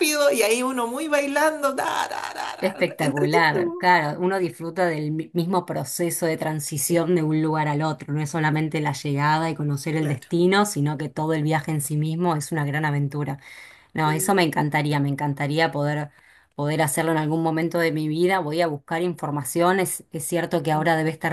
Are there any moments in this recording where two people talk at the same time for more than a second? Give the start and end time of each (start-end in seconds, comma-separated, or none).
2.6-3.9